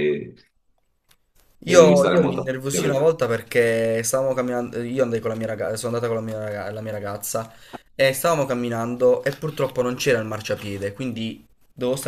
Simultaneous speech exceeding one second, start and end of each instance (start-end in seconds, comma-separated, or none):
1.6-3.2